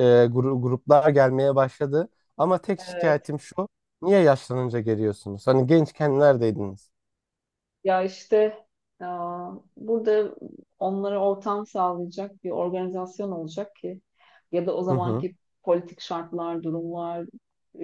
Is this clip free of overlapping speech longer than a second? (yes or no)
yes